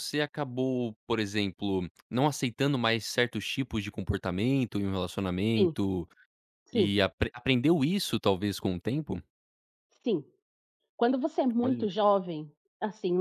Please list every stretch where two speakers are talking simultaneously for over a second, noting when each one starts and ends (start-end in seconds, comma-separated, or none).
none